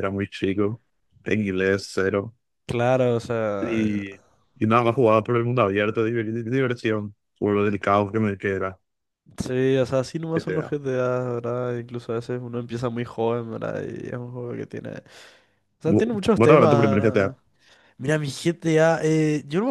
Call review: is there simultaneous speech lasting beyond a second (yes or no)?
yes